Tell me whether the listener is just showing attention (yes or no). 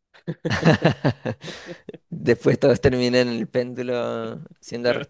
yes